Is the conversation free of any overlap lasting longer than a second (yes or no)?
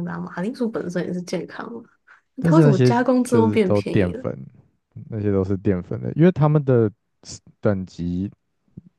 no